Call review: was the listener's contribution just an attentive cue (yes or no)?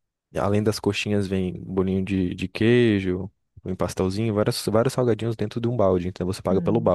no